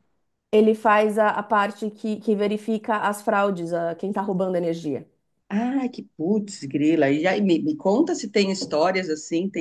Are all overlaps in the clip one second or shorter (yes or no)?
yes